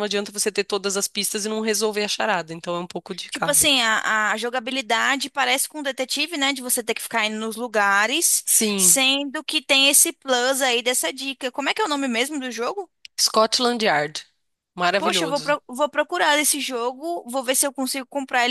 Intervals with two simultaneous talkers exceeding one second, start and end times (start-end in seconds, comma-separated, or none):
none